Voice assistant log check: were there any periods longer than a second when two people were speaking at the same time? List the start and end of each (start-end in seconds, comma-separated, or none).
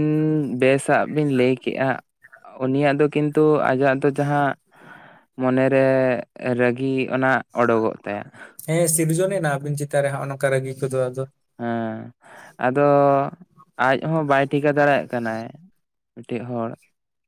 none